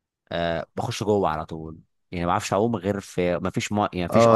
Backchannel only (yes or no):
no